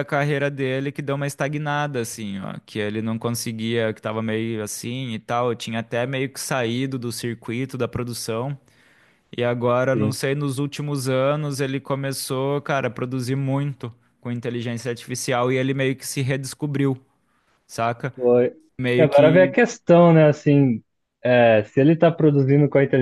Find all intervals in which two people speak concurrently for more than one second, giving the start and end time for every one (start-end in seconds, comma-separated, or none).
none